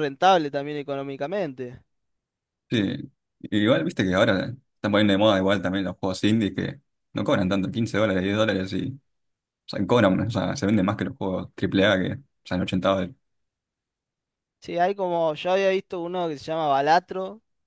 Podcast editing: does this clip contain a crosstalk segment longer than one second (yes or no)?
no